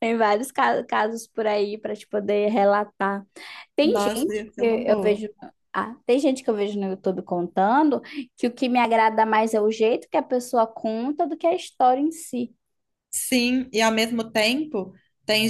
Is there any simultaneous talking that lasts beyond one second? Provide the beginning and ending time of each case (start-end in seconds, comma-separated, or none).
3.8-5.2